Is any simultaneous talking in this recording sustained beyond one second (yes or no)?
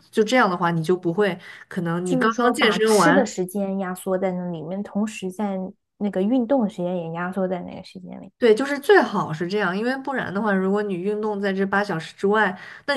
yes